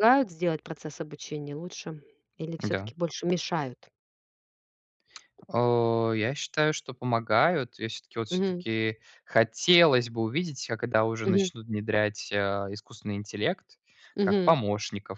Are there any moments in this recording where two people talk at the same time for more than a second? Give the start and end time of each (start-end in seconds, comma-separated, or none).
none